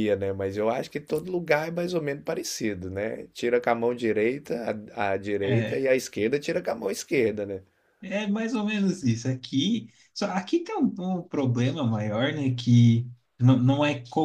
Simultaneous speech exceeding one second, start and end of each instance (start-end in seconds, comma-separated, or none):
none